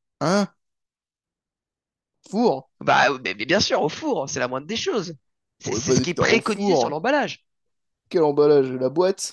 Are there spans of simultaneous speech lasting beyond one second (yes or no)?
yes